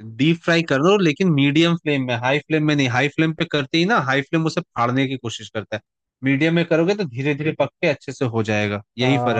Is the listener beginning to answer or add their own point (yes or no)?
yes